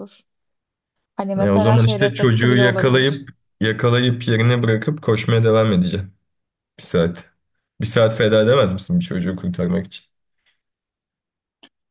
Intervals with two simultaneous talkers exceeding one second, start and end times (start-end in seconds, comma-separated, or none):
1.4-3.3